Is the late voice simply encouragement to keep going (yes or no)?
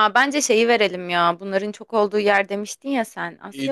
no